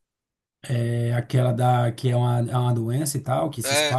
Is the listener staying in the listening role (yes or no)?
no